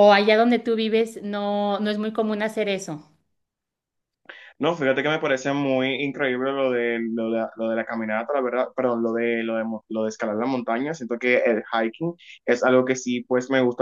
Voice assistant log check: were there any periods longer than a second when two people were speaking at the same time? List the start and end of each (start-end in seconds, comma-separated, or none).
none